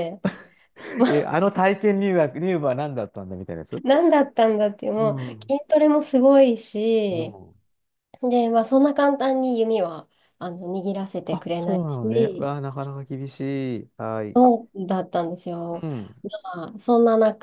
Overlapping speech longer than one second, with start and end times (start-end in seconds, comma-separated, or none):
11.3-12.5